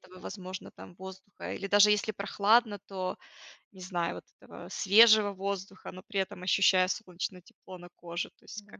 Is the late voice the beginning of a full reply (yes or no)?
yes